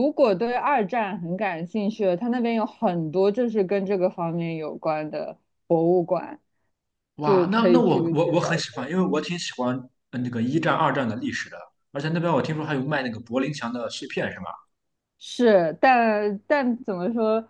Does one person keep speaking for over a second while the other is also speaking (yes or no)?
yes